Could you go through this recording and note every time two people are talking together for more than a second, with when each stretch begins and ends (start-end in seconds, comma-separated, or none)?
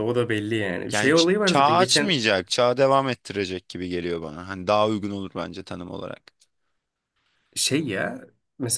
0.9-2.1